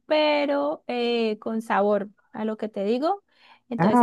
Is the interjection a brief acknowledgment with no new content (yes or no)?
yes